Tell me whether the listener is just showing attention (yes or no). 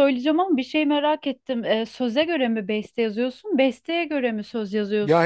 no